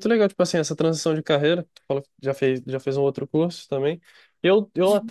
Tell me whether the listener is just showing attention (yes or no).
yes